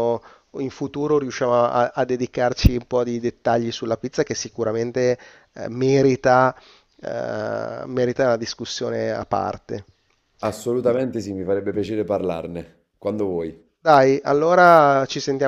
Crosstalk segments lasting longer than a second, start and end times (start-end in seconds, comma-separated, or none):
none